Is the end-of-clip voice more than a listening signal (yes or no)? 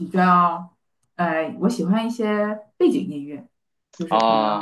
no